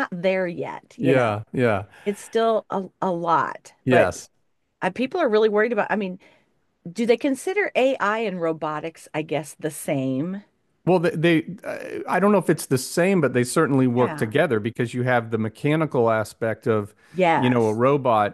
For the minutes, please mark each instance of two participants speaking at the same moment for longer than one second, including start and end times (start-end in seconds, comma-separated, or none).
none